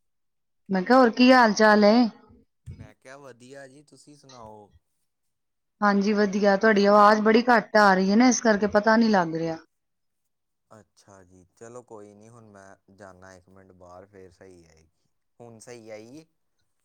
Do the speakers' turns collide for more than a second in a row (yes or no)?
no